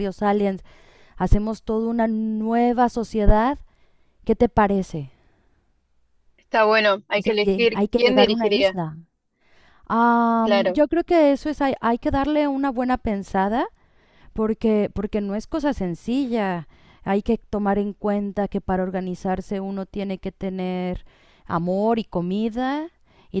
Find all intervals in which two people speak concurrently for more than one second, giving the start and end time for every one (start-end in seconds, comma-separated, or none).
7.2-8.7